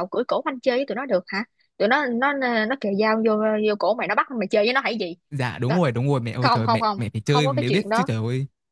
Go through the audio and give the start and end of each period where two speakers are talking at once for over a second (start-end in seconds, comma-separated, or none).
6.4-8.1